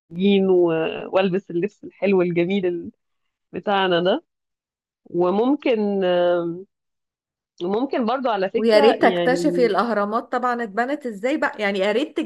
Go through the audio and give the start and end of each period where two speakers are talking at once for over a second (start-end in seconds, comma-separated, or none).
8.5-9.7